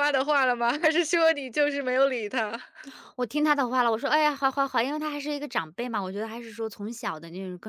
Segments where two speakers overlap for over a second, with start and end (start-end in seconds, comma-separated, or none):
none